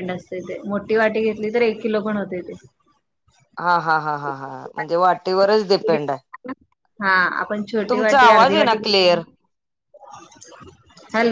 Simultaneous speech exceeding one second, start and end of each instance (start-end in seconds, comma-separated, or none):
7.9-9.2